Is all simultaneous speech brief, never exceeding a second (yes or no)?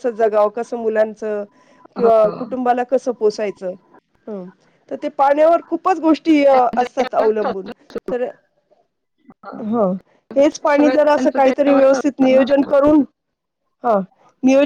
no